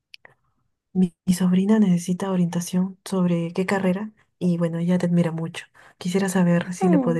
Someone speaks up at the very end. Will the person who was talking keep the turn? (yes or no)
yes